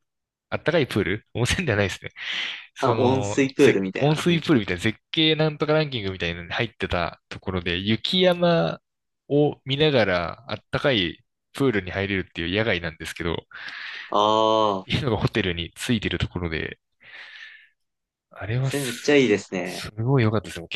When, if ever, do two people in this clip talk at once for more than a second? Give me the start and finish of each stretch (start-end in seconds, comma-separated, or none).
2.8-4.4, 18.6-19.9